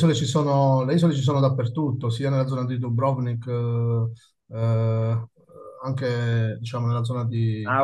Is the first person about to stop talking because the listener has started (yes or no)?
yes